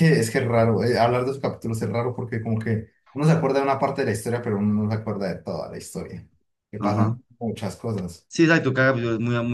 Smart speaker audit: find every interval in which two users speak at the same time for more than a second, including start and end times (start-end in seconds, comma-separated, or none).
none